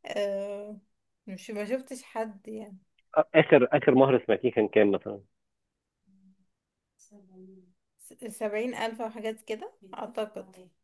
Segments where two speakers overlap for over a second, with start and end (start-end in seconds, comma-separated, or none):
none